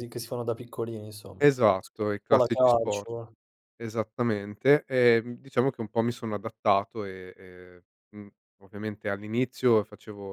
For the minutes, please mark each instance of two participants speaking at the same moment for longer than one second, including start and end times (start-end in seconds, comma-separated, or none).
1.4-3.1